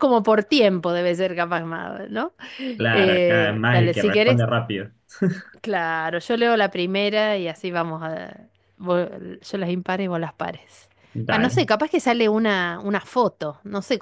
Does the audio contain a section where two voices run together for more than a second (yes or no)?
yes